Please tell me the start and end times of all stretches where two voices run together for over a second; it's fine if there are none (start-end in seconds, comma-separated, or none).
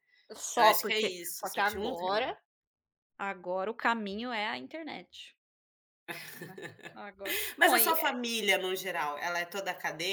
0.6-2.4